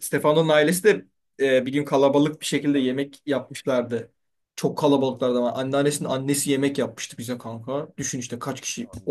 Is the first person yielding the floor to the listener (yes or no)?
no